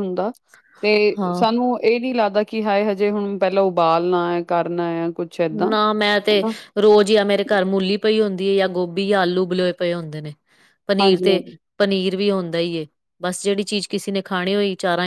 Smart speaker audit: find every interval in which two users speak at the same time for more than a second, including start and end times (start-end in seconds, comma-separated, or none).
none